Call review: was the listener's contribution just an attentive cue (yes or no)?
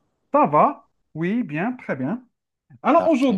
yes